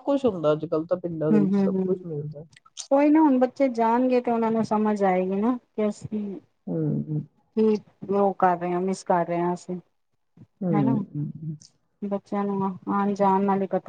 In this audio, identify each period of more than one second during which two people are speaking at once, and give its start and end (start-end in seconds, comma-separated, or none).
none